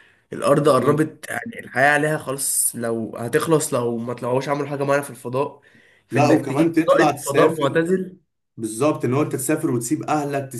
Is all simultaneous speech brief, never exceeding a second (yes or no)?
no